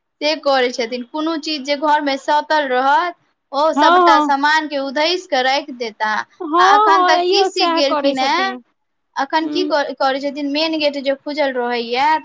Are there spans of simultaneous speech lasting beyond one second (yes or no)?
yes